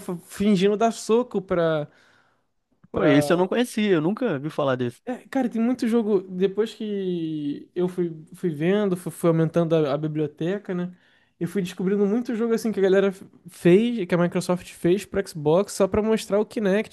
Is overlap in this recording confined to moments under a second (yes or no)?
yes